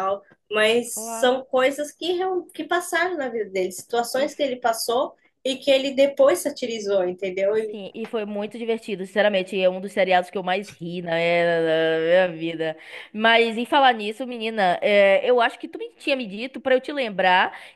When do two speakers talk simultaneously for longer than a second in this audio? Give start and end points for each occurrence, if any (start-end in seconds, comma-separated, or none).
none